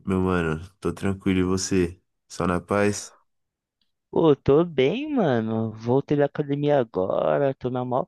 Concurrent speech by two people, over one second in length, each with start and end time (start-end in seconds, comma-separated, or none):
none